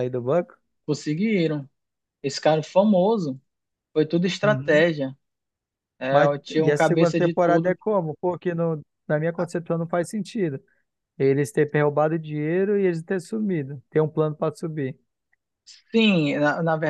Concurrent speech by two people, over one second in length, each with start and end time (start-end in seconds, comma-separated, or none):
6.1-7.8